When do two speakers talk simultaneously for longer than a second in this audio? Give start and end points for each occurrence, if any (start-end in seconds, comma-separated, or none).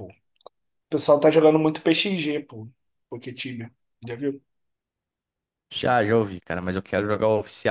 none